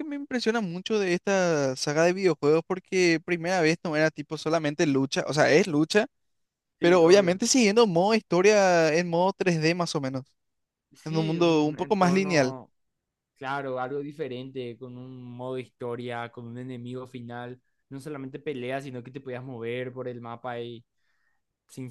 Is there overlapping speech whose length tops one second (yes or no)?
yes